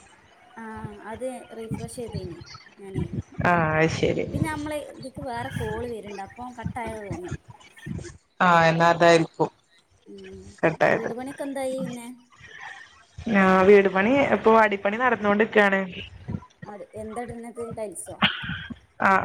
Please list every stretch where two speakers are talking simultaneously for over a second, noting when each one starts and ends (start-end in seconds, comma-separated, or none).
none